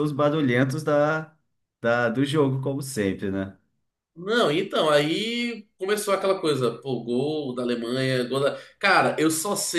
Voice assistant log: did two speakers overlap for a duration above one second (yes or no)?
no